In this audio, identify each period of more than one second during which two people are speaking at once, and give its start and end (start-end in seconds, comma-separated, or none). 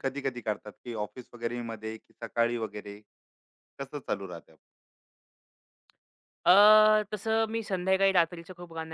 none